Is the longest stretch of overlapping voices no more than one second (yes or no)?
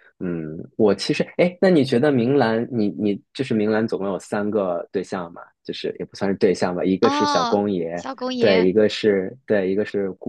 no